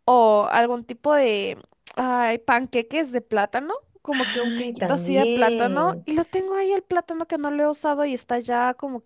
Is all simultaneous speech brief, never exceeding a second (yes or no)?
no